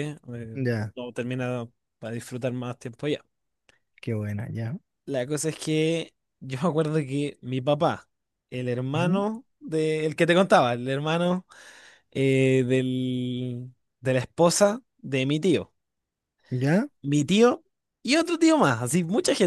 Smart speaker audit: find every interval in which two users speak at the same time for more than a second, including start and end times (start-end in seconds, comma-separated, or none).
none